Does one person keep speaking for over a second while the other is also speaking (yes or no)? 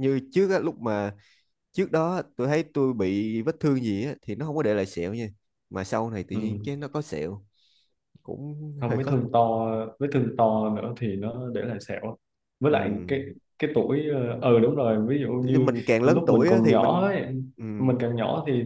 yes